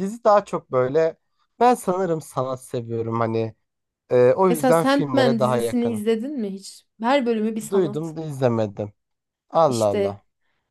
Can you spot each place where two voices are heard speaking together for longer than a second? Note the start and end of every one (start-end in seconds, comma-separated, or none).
4.5-6.0